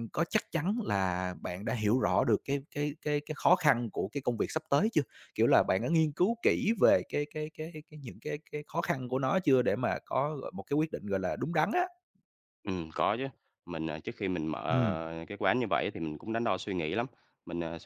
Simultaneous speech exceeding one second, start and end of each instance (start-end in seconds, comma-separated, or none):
none